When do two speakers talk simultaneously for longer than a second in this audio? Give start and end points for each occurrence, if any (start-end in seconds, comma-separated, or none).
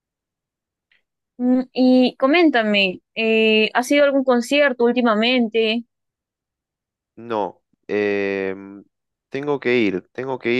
none